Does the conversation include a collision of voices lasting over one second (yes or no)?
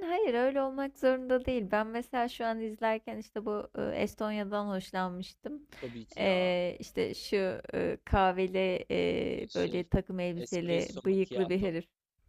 yes